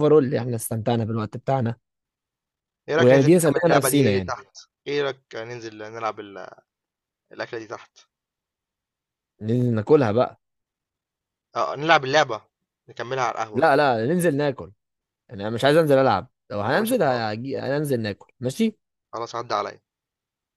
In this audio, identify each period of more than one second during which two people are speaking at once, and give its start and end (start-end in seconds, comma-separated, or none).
3.0-4.3